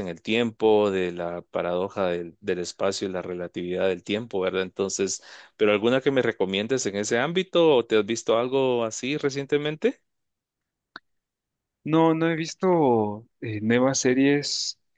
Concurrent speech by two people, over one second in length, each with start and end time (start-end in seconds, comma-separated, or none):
none